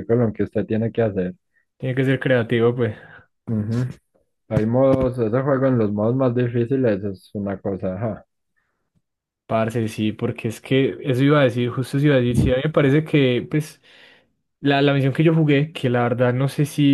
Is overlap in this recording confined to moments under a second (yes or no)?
yes